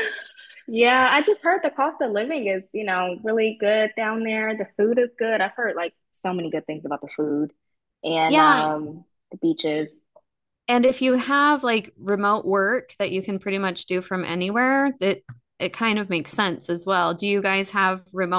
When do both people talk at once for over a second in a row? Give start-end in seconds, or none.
none